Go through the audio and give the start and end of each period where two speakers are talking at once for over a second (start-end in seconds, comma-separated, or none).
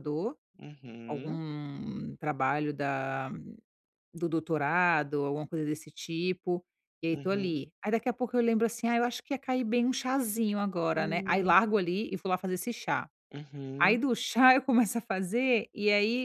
none